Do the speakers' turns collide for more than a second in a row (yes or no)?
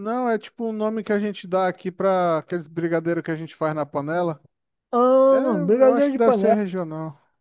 yes